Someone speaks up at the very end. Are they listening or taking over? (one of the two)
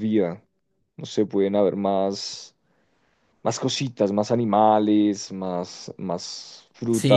taking over